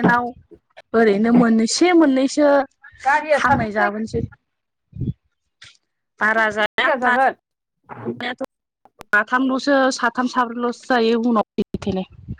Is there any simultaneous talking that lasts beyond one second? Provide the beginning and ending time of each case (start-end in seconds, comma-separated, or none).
none